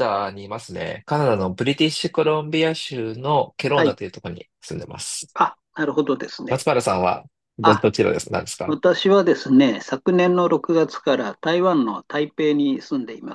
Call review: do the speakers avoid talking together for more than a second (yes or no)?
yes